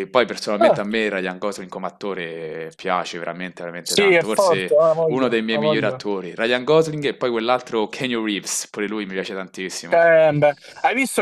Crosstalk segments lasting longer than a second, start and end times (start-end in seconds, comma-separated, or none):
3.8-6.0